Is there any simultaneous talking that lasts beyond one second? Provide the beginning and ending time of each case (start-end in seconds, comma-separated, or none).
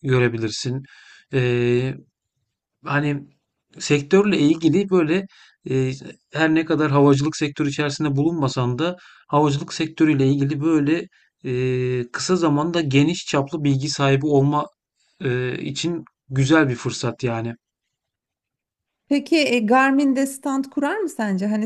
none